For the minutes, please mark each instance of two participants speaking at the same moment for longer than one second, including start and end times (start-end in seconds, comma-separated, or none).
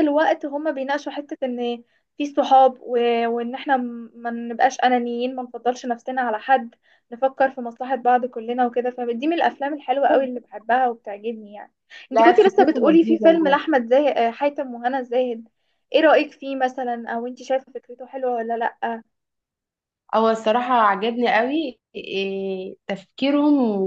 12.1-13.6